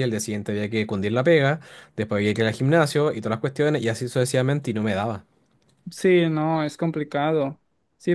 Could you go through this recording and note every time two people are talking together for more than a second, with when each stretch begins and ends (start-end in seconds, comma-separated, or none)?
none